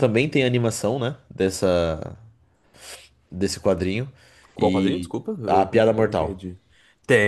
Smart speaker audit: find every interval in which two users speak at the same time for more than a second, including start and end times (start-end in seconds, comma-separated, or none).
4.6-6.4